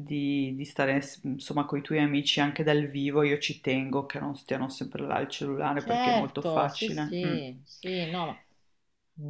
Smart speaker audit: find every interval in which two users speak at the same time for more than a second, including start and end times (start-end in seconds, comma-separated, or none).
5.8-7.4